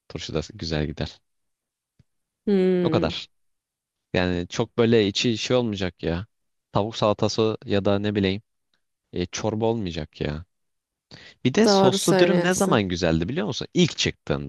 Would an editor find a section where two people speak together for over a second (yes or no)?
yes